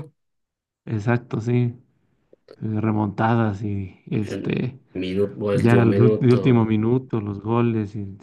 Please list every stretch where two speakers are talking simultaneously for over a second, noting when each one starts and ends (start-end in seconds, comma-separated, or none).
5.5-6.7